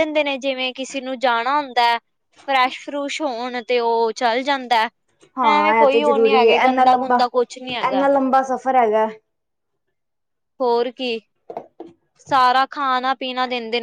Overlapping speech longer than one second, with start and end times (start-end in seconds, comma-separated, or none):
5.5-8.0